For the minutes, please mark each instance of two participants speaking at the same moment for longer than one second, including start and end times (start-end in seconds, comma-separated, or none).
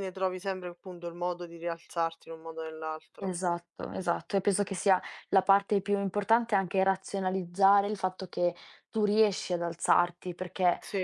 none